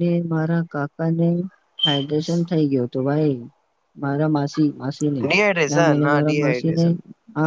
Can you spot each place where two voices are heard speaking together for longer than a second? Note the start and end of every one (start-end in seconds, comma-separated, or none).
5.3-6.9